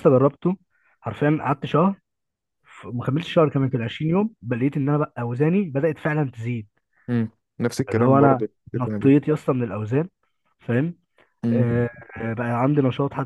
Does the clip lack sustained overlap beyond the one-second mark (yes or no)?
no